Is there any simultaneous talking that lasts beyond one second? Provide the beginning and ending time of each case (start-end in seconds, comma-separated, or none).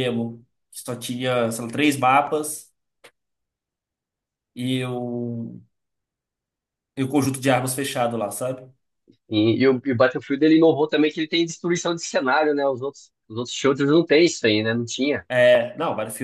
none